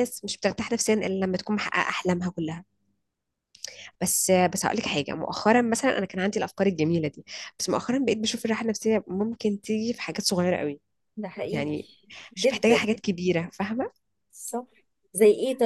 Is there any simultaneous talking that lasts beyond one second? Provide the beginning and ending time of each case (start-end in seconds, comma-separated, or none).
none